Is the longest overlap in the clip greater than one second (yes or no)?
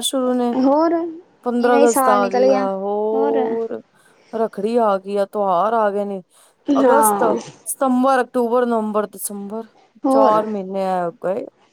yes